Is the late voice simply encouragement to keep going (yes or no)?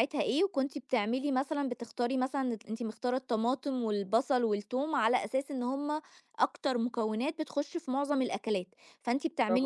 yes